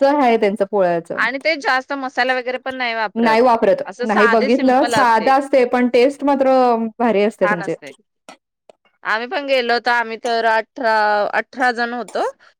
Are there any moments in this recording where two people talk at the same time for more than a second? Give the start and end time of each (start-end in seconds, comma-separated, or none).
4.1-5.3